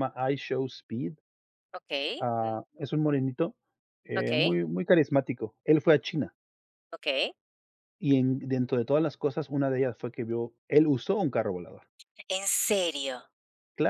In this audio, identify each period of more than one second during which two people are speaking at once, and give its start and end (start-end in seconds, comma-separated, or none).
none